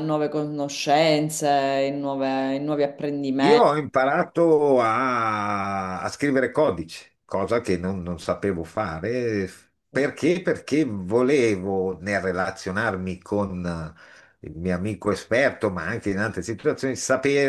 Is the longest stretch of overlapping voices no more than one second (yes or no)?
yes